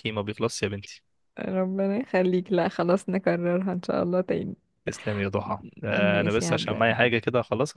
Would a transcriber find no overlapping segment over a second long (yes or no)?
no